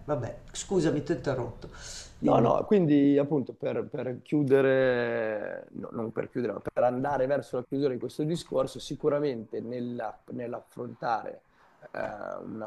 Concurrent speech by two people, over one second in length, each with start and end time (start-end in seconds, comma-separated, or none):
none